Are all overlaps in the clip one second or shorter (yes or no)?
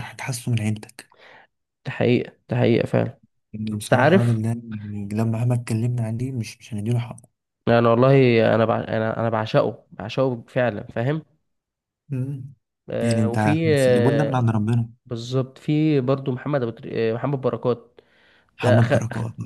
no